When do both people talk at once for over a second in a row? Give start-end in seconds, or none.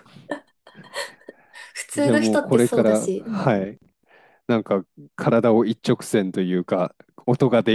2.0-3.5